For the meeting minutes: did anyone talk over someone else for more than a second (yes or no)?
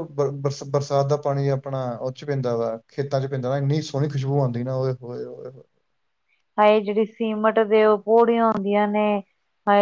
no